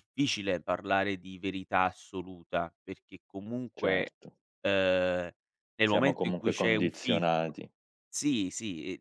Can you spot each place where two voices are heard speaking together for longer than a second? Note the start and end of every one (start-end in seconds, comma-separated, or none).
5.9-7.5